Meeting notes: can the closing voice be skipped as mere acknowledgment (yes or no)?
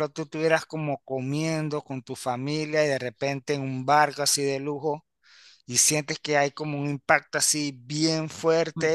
yes